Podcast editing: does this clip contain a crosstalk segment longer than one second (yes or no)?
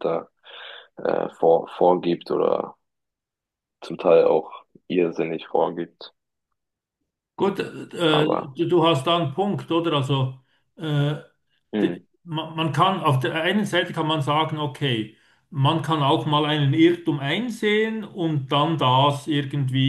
no